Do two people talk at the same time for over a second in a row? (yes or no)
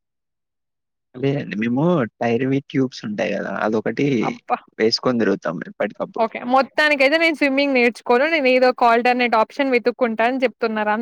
no